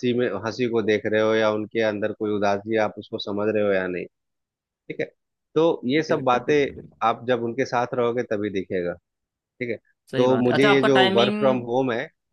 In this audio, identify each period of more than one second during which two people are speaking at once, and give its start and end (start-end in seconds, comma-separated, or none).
10.2-11.6